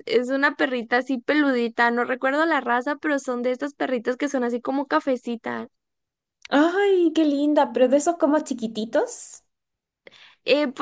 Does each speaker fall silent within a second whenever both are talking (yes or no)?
yes